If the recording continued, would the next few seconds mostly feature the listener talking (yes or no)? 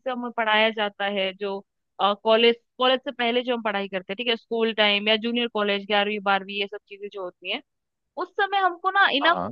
no